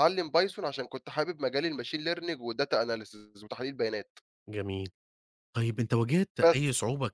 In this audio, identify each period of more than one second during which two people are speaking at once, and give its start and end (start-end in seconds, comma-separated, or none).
none